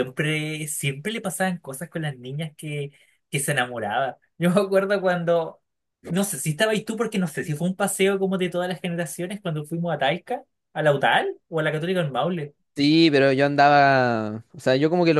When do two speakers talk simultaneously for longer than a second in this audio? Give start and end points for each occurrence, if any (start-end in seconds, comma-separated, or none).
none